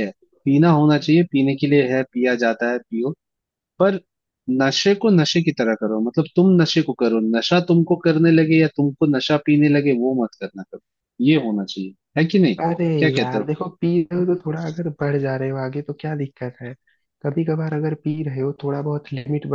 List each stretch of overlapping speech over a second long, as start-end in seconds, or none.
none